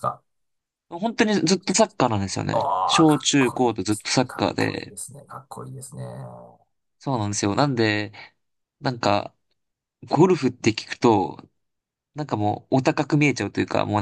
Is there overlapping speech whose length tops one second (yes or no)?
yes